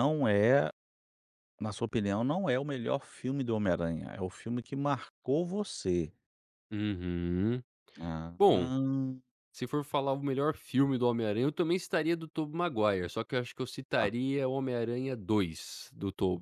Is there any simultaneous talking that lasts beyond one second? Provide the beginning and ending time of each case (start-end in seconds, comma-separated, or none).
none